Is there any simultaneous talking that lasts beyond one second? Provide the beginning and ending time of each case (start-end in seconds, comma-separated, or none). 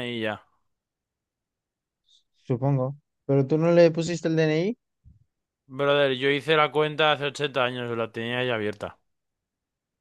none